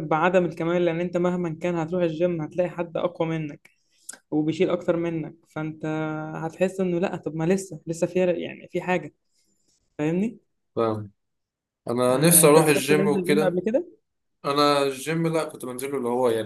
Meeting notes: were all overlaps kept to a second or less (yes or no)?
no